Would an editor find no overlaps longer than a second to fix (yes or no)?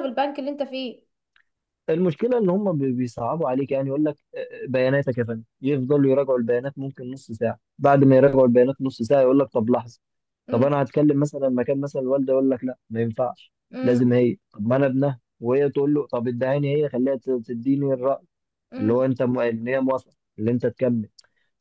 yes